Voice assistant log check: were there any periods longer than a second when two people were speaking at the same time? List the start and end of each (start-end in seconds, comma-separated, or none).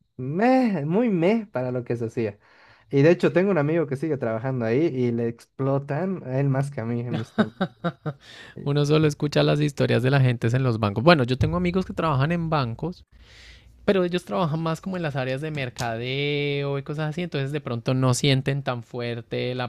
none